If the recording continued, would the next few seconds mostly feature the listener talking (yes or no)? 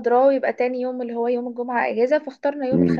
no